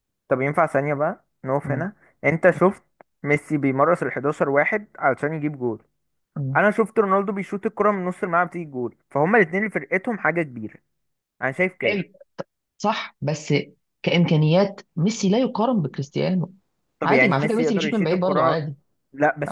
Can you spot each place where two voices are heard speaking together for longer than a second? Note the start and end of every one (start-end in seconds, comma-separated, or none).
17.0-18.6